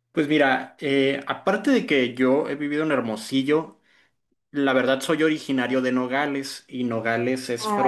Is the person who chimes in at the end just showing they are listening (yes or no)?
yes